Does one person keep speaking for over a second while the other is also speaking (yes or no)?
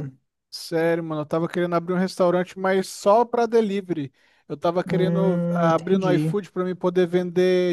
yes